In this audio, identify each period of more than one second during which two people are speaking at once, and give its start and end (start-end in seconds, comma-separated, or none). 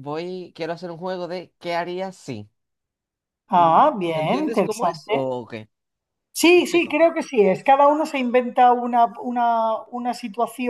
3.5-5.2